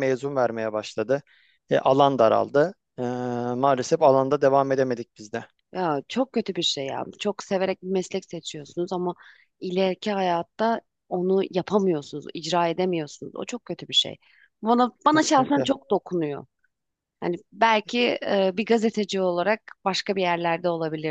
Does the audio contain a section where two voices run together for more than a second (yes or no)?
no